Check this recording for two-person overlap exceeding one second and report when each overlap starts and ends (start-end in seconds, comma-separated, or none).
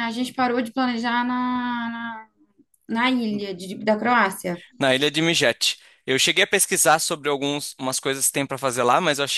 none